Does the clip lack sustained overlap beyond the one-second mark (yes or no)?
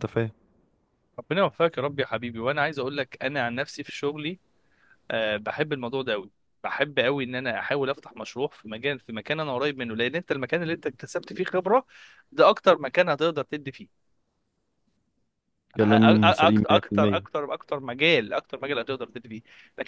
no